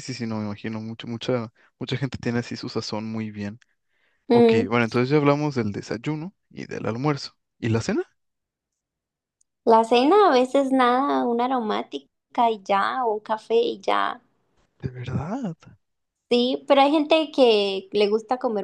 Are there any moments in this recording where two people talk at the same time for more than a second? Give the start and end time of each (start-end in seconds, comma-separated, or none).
none